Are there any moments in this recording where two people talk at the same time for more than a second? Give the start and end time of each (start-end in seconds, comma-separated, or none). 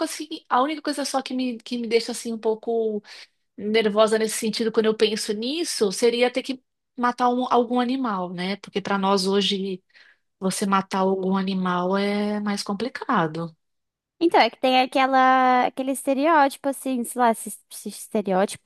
none